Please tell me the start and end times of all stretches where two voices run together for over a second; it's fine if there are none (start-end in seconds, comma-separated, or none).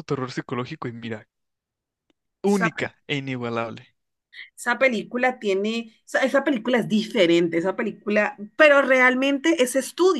none